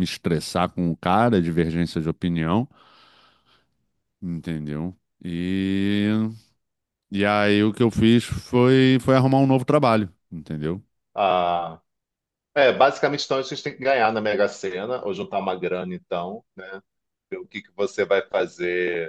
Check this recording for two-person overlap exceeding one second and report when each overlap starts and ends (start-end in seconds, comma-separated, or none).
none